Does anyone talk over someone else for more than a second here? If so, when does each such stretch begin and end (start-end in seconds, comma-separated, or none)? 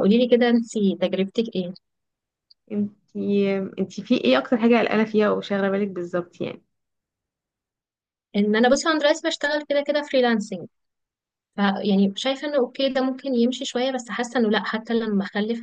none